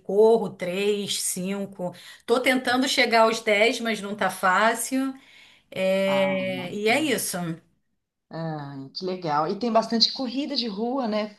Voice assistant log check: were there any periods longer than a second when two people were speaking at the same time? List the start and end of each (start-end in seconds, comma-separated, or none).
6.0-7.2